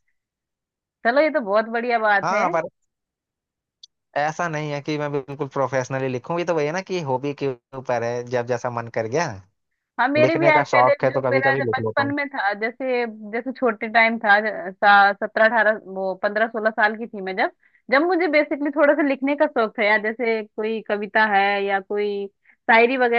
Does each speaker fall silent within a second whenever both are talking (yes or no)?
no